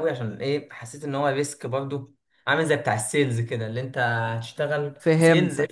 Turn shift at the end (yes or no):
no